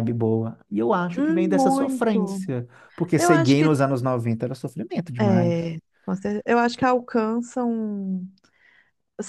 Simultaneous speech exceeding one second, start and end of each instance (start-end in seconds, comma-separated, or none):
1.1-2.4